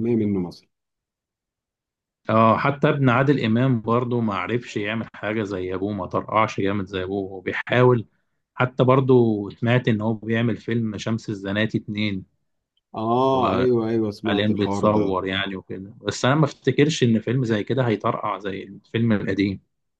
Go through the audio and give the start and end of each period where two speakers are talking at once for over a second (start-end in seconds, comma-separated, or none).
13.1-15.2